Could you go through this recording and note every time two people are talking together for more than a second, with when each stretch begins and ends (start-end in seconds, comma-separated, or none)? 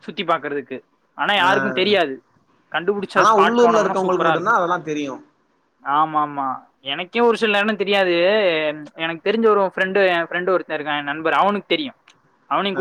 3.2-4.5